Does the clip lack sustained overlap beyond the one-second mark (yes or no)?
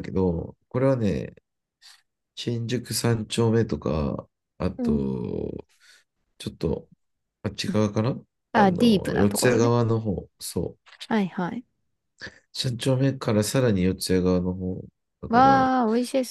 no